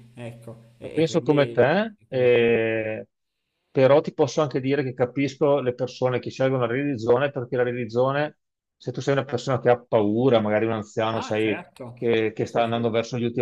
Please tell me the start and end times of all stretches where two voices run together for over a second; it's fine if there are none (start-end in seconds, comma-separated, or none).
11.1-12.9